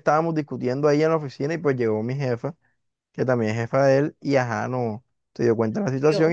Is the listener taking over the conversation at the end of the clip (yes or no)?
no